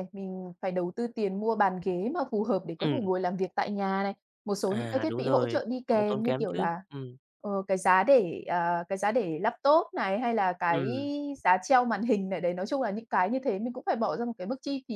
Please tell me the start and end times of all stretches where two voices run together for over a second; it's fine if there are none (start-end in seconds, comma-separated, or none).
4.7-6.8